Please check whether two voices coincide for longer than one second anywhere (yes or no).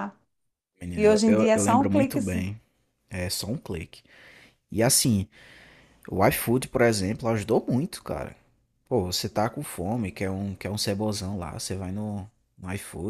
yes